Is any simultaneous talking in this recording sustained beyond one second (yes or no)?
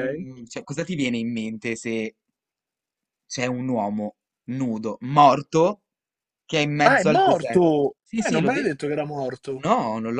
yes